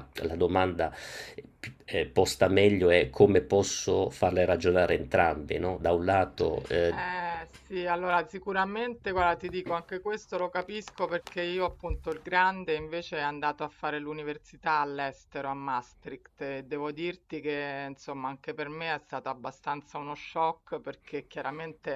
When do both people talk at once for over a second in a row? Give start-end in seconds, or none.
none